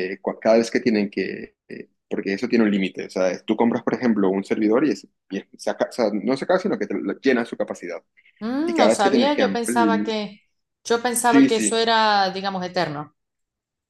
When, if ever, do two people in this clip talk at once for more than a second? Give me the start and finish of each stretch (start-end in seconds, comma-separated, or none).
8.7-10.1